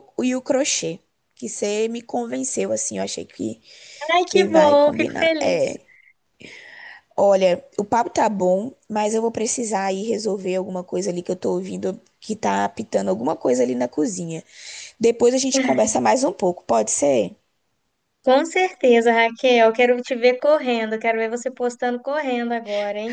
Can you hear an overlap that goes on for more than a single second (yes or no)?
yes